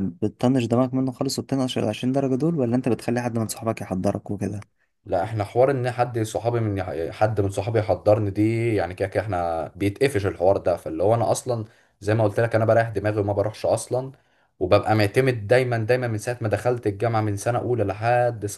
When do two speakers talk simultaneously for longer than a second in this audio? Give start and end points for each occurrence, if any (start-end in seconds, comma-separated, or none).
none